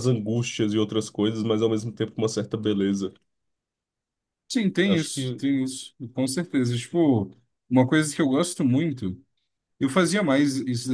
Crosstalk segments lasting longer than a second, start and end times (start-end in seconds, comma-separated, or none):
none